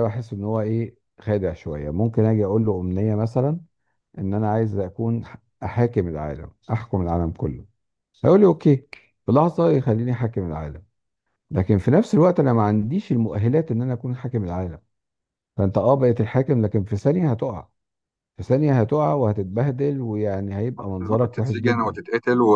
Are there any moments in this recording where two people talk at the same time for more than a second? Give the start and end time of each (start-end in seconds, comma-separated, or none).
20.8-22.0